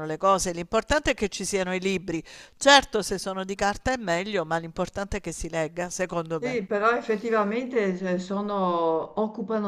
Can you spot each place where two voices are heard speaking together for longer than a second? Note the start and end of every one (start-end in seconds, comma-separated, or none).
none